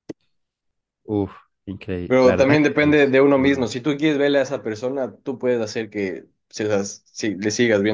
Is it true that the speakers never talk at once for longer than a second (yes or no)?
no